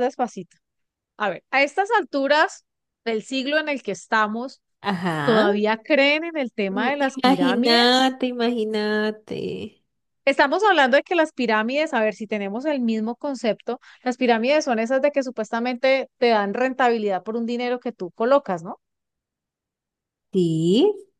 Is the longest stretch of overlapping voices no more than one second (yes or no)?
no